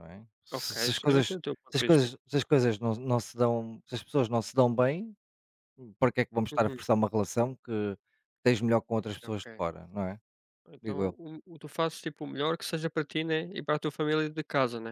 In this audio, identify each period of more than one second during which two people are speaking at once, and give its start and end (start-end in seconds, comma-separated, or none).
0.5-2.1